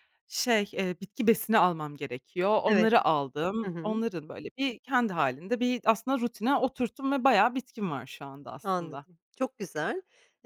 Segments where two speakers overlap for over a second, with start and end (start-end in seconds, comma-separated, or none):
none